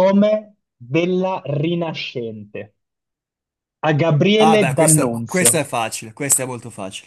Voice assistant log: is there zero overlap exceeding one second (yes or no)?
no